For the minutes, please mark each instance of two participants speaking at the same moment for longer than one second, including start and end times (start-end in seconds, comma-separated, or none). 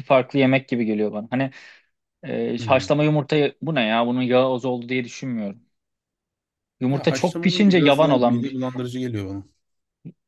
6.9-8.6